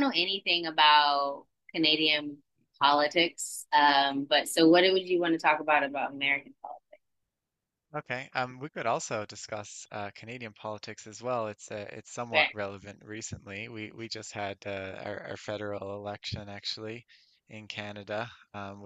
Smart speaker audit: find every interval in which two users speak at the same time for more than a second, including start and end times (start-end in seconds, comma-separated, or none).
none